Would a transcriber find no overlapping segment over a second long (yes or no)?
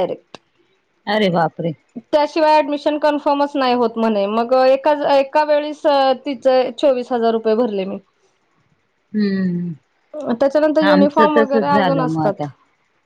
no